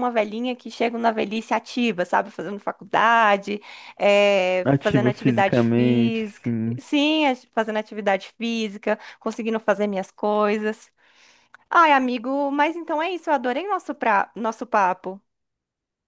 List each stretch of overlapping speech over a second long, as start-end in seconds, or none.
4.6-6.8